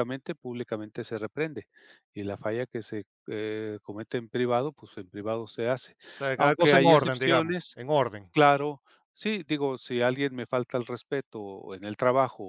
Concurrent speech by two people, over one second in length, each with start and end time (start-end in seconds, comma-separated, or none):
6.4-7.8